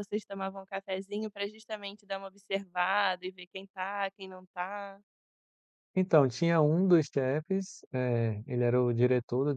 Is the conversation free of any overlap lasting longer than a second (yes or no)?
yes